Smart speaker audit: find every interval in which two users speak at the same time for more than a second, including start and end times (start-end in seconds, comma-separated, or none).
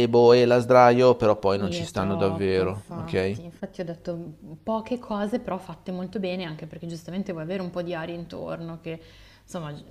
1.5-3.4